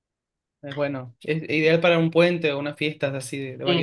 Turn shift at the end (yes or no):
yes